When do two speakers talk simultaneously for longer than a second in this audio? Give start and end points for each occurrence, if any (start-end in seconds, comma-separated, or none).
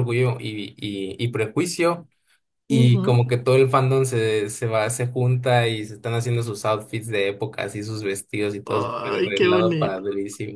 8.7-10.0